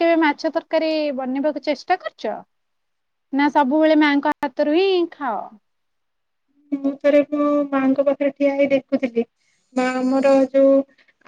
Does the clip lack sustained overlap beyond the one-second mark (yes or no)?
yes